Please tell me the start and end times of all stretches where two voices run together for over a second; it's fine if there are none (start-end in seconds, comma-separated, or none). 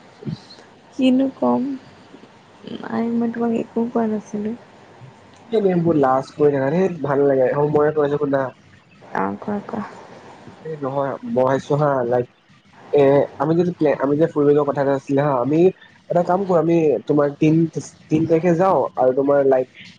none